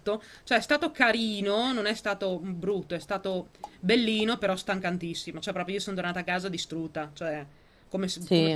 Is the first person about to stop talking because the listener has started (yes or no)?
yes